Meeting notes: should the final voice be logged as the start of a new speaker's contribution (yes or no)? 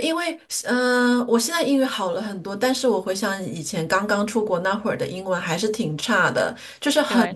no